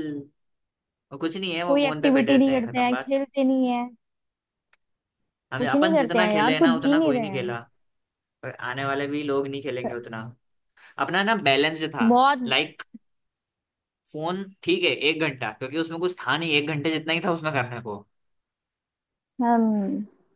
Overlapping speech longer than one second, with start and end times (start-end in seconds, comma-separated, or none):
1.7-3.2, 5.6-7.6